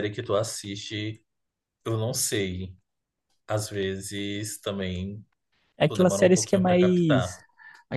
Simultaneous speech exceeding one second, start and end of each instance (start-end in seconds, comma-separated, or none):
5.9-7.3